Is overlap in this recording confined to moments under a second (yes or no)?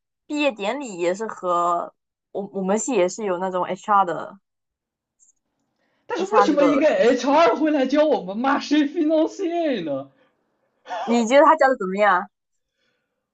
no